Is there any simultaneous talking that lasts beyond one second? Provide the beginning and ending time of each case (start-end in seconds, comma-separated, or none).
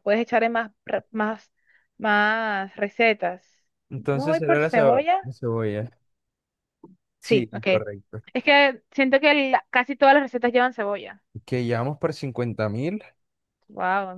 4.0-5.2